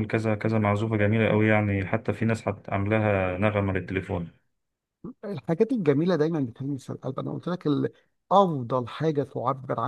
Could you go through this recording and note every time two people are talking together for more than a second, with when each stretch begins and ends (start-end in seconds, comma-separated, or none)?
none